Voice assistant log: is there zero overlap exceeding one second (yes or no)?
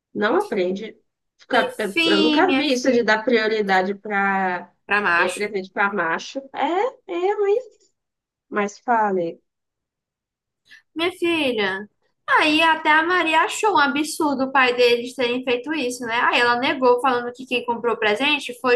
no